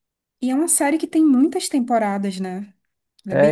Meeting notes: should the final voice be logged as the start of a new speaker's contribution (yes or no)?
yes